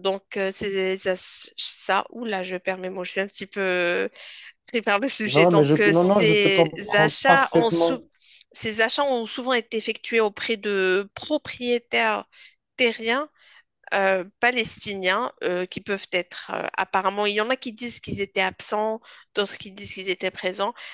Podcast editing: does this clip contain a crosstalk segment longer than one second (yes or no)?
yes